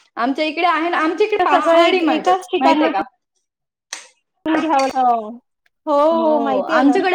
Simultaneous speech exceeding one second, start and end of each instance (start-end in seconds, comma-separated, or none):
1.4-2.9